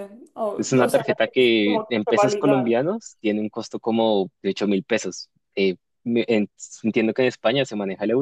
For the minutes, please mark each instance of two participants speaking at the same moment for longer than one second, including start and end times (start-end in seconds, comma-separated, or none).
0.6-2.8